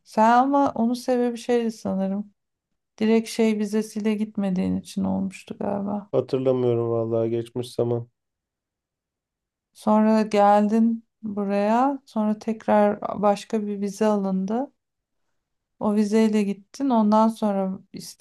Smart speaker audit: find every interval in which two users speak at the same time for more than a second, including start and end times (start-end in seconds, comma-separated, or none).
none